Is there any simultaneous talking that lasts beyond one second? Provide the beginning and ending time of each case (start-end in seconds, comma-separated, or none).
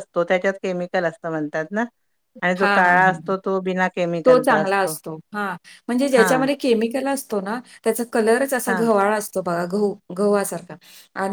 none